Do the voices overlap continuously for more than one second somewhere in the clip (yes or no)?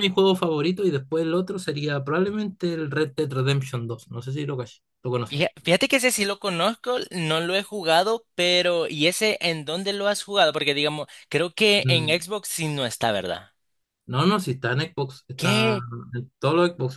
no